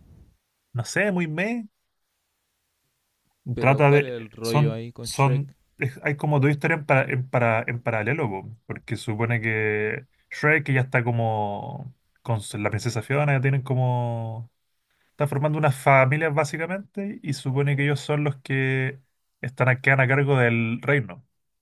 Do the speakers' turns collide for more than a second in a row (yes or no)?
yes